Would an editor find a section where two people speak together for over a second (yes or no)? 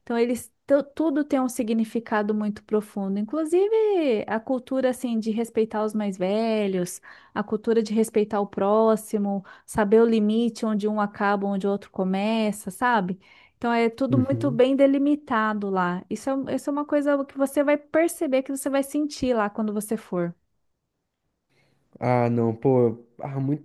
no